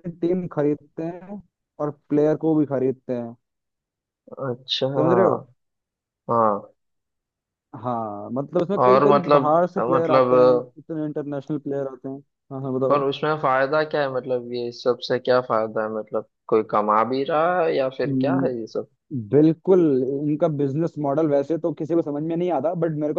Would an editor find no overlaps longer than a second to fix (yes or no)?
no